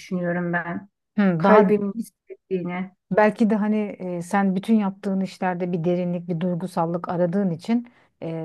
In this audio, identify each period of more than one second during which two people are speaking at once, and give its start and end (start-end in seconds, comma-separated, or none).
none